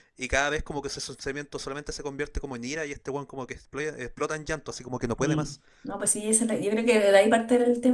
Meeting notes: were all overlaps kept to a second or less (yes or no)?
yes